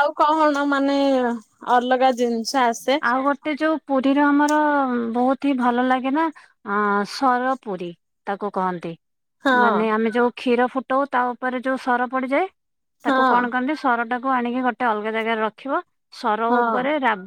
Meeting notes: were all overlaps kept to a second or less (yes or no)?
yes